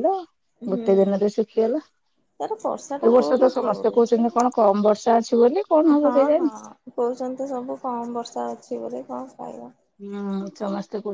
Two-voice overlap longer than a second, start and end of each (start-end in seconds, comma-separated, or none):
2.4-4.2